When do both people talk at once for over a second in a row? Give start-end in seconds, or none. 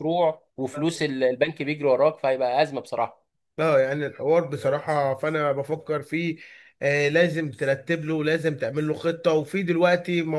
none